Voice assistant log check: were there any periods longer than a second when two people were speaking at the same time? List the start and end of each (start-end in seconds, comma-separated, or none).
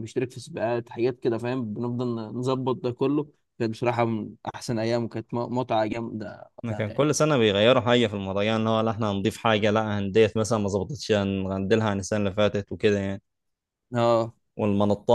none